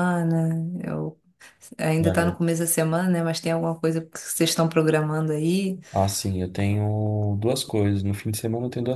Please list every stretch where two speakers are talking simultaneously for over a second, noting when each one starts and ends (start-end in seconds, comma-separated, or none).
none